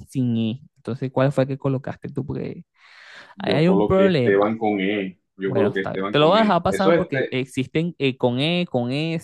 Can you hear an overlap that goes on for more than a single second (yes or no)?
yes